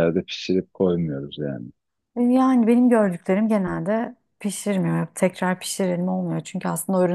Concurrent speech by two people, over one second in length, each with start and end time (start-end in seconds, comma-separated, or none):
none